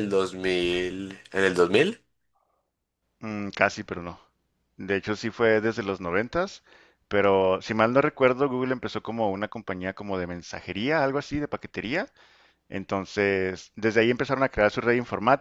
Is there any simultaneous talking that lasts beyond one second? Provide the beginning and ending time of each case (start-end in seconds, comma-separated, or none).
none